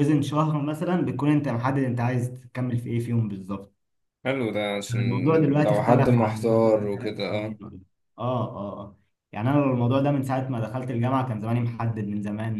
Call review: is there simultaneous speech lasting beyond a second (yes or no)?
yes